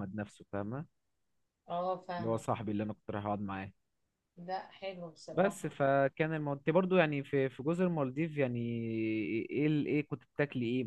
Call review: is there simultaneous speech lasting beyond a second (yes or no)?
no